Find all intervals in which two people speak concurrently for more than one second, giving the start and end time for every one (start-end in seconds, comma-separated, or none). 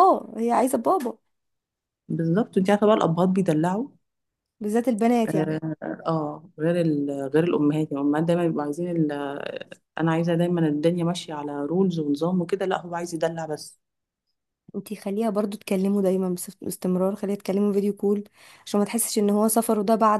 none